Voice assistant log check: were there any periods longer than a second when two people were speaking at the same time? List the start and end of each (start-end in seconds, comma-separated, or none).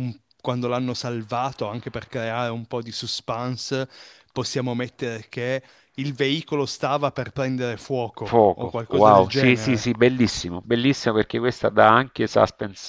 8.2-9.9